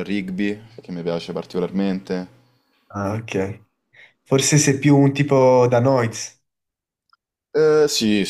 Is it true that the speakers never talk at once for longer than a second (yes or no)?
yes